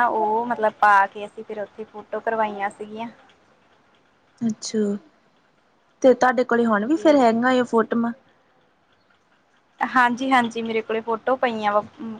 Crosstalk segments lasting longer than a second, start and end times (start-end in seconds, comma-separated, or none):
none